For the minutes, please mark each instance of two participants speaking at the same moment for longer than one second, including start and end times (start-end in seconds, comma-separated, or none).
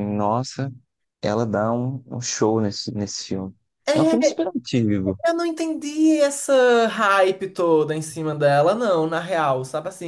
none